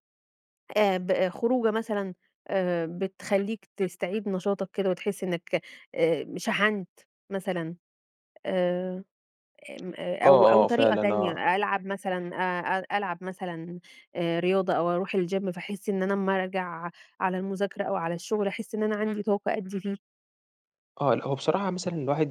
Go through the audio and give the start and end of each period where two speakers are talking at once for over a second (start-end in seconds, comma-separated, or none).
10.2-11.5